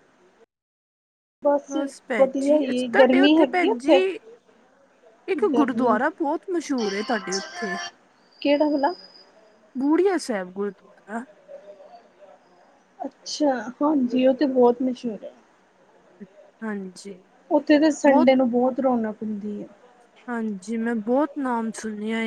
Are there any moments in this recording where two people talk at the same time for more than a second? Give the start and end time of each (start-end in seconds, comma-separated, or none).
2.2-4.0